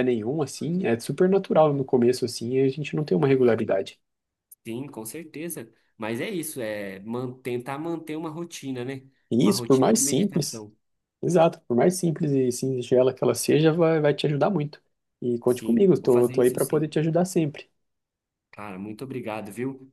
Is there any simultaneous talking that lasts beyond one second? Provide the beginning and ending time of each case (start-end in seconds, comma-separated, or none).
9.3-10.6, 15.5-17.0